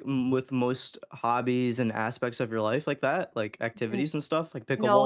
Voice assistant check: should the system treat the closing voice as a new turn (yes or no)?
yes